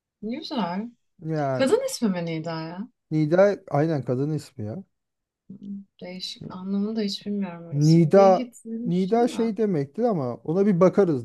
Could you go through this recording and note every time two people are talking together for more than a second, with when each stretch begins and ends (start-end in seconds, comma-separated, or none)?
7.7-9.5